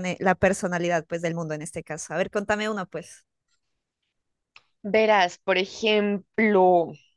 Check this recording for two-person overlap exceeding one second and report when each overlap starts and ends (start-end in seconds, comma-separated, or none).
none